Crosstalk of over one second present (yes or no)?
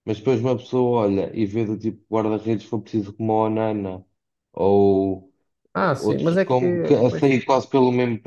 yes